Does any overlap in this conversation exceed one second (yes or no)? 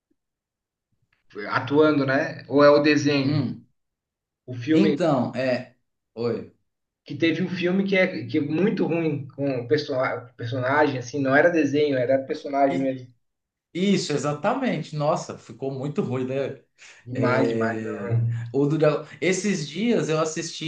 yes